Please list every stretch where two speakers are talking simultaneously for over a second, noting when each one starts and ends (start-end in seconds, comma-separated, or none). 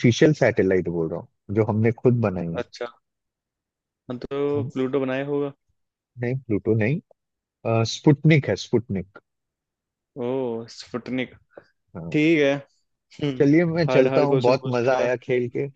13.4-15.1